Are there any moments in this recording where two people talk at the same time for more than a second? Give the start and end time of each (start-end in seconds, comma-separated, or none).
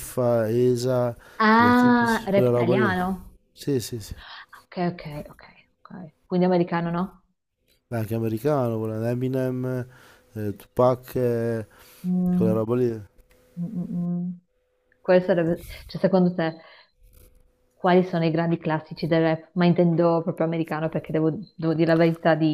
1.6-2.9